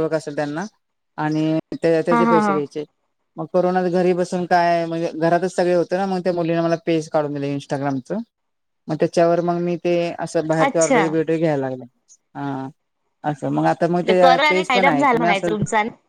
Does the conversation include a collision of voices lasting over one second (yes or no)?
yes